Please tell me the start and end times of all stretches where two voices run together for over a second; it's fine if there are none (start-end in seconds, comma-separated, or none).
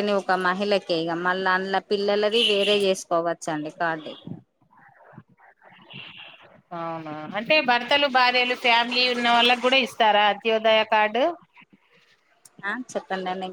none